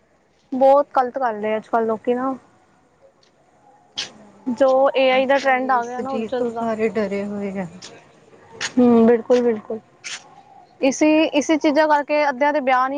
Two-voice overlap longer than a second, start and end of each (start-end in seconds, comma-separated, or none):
5.1-6.6